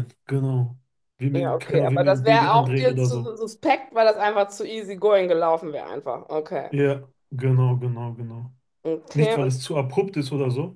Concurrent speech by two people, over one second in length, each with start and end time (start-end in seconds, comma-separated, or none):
1.3-3.4